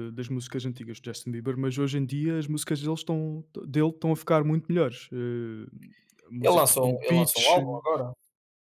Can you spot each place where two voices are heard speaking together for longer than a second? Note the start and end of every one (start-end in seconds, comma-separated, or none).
6.4-7.6